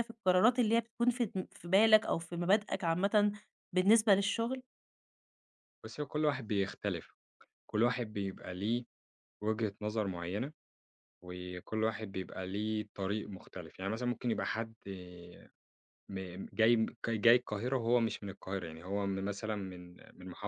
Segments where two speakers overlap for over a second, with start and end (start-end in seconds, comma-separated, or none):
none